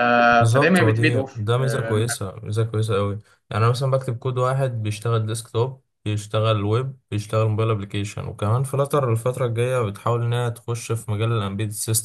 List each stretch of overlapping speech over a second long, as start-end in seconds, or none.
0.5-2.0